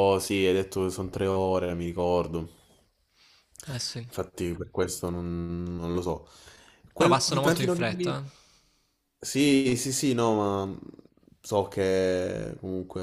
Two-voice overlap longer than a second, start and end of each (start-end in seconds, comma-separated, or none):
7.0-8.2